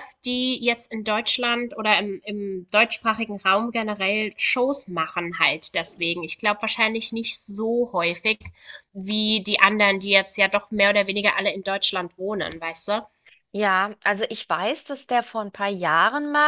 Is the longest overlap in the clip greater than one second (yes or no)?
no